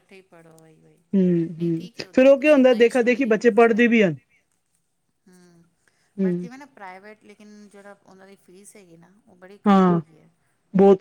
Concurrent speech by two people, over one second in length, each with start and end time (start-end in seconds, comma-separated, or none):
1.6-4.0